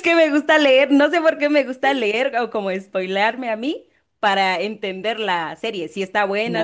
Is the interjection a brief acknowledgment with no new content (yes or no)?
no